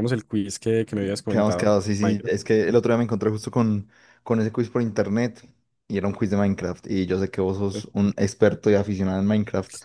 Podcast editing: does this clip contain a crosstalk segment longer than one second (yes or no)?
yes